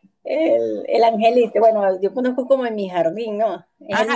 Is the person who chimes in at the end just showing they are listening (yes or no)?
no